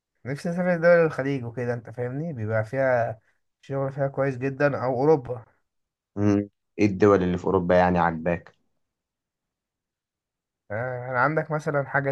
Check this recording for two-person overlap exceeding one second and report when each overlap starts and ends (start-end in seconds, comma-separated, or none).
none